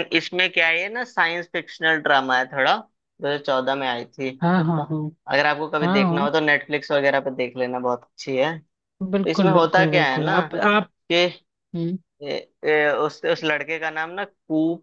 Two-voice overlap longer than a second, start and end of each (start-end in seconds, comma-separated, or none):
9.1-10.4